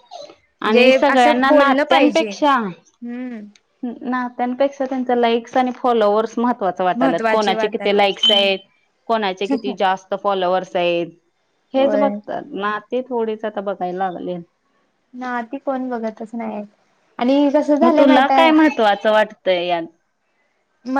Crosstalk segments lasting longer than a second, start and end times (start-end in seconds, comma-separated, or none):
0.7-2.3, 7.0-8.2